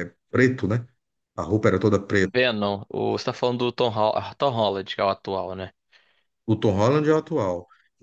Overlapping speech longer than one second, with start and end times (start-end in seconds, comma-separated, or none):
none